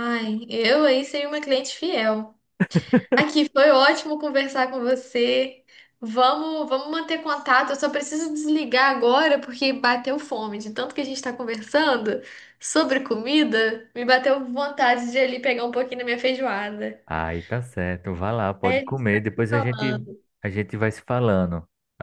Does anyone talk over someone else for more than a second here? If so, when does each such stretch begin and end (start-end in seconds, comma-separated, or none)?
18.6-20.0